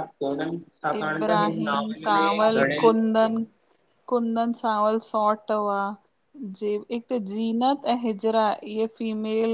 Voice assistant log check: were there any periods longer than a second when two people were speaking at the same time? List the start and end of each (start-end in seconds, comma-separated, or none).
1.0-2.9